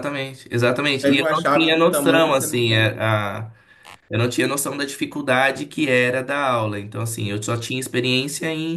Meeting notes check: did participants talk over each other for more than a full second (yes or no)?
yes